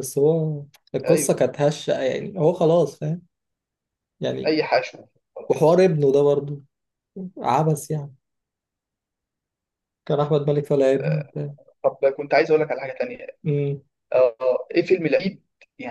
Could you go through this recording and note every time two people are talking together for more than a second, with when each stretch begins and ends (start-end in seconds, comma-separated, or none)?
none